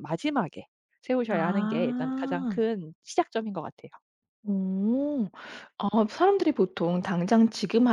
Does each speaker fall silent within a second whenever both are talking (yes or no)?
no